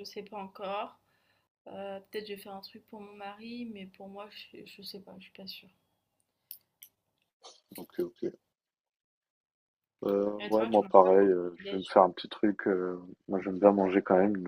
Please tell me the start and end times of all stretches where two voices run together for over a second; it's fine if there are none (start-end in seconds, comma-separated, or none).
10.4-11.9